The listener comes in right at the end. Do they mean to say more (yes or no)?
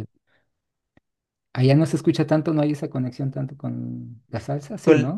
yes